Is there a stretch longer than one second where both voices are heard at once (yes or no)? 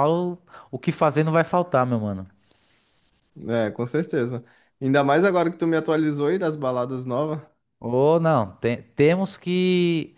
no